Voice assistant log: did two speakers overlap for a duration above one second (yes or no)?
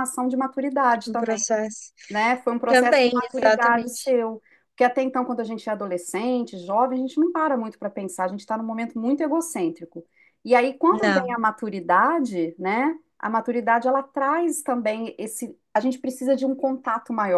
yes